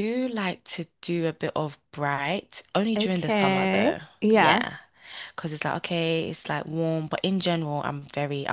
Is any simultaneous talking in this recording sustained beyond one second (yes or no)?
yes